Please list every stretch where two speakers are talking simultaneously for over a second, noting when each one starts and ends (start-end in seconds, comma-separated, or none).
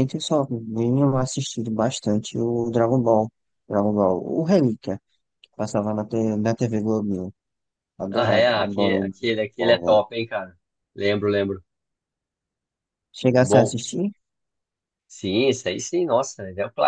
8.1-10.0